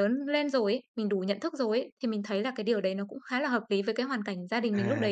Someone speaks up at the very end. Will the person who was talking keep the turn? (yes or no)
no